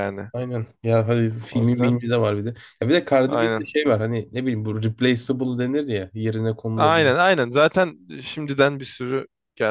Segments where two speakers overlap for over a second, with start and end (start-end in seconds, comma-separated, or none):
none